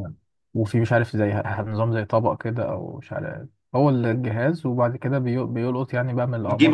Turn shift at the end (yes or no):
yes